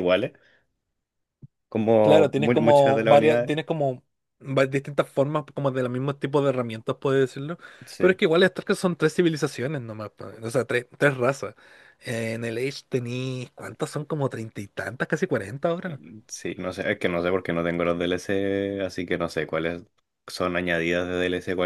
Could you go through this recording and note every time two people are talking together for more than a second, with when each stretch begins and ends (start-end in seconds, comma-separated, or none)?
2.0-3.5